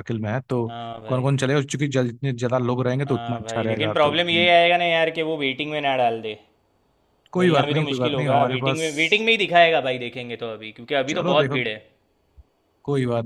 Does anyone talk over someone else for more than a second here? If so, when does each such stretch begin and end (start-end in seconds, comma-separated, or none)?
3.1-4.5, 7.4-8.8